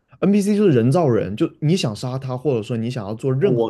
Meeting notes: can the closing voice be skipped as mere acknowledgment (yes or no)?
yes